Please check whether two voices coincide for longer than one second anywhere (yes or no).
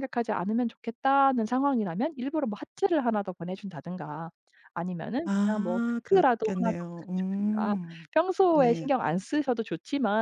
yes